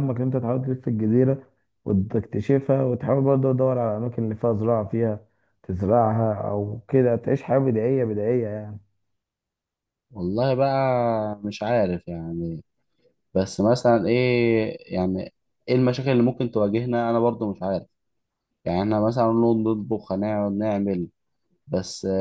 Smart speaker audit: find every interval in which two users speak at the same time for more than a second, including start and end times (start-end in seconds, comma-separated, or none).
none